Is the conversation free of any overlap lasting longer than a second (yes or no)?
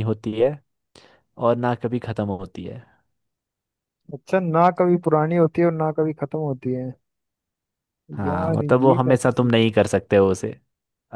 no